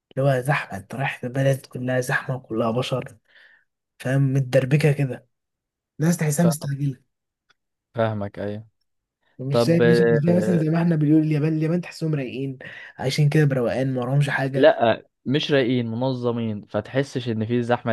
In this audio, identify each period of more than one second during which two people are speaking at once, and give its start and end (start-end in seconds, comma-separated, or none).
9.5-10.8